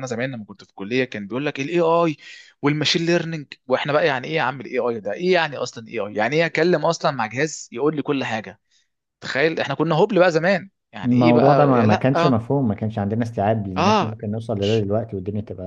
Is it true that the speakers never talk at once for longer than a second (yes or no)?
no